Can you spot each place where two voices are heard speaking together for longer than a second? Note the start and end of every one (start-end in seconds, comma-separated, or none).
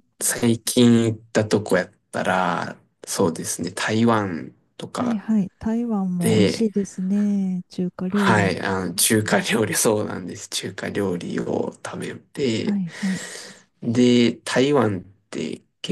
none